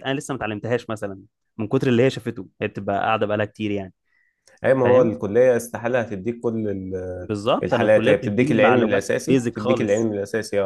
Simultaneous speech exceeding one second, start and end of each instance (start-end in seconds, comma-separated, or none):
7.2-10.1